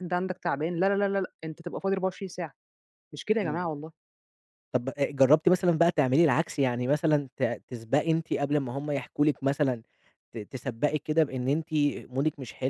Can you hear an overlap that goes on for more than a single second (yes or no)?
no